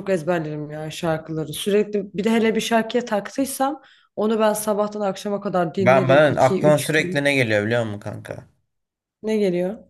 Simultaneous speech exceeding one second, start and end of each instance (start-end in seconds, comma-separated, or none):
5.8-7.3